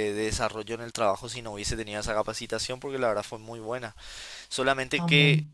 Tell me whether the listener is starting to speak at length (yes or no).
no